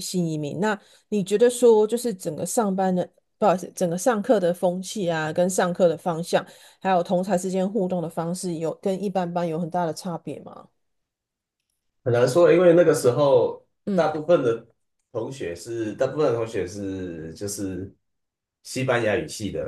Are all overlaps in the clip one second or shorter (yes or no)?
yes